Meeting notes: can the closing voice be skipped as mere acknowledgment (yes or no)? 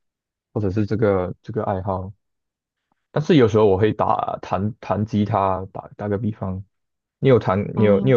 yes